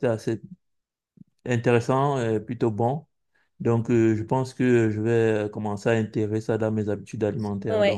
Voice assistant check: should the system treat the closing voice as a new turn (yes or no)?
yes